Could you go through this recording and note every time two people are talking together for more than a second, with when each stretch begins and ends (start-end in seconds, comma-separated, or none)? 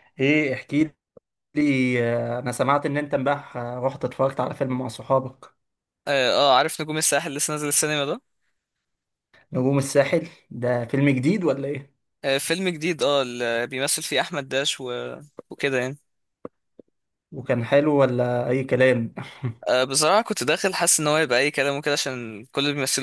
none